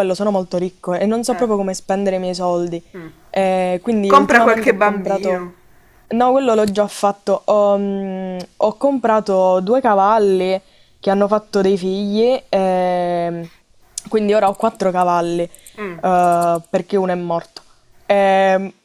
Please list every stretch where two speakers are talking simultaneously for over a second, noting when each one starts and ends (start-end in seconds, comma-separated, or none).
4.1-5.5